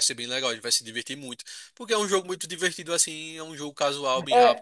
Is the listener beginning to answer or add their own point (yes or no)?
yes